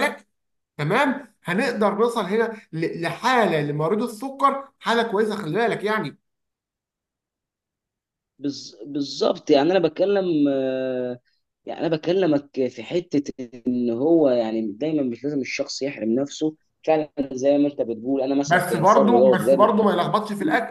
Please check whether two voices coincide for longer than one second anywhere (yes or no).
yes